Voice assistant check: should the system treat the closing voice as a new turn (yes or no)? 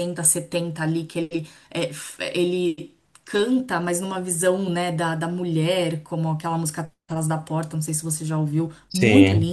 no